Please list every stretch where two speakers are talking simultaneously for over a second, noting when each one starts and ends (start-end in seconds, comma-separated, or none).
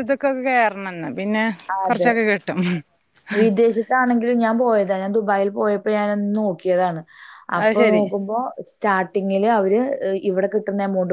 none